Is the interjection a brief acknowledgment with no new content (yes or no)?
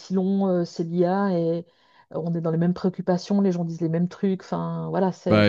yes